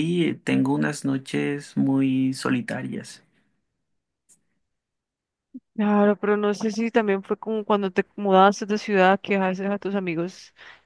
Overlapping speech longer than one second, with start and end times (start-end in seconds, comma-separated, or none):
none